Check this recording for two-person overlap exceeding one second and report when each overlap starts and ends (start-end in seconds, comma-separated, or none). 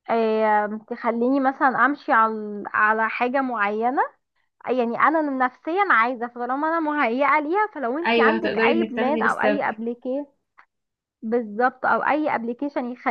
8.1-9.6